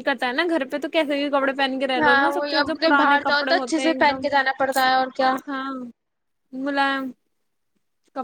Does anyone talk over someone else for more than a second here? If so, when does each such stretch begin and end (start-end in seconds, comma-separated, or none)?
2.0-4.3